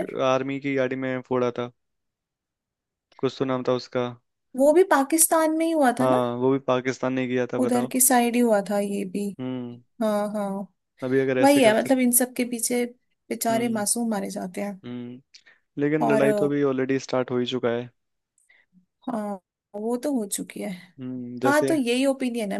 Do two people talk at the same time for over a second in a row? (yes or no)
no